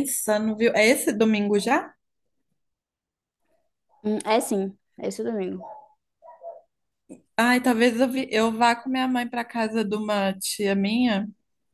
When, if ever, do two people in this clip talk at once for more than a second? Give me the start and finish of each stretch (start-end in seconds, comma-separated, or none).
none